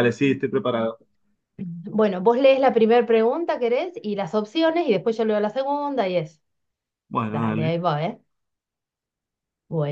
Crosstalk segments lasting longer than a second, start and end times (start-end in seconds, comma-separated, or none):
none